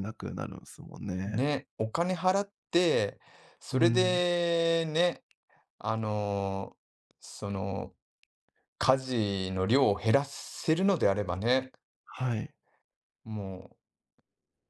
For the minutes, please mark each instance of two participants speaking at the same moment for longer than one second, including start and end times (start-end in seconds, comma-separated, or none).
none